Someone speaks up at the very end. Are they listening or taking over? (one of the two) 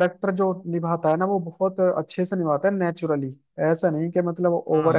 taking over